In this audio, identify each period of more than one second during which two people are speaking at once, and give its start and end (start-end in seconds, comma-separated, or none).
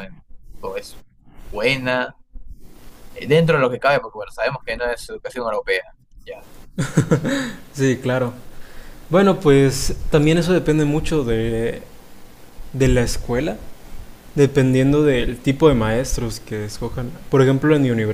none